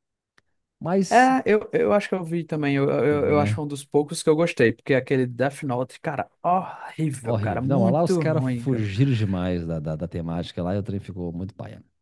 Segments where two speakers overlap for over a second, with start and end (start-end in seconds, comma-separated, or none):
7.2-8.8